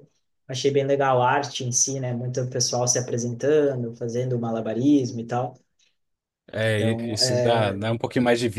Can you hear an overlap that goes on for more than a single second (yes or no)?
no